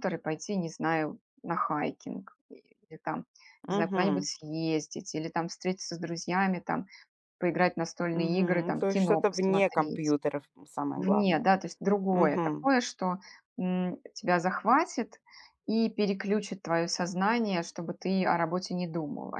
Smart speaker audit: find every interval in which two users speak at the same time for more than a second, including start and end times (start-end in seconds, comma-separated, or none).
8.1-10.2